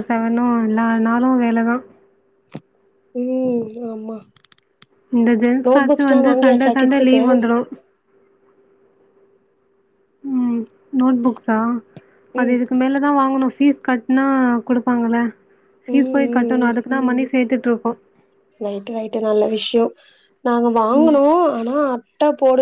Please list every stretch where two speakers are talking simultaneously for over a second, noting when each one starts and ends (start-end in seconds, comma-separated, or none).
5.7-7.2